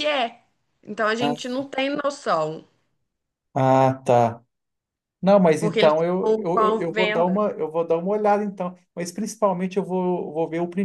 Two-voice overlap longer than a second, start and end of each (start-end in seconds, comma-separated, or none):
5.6-7.4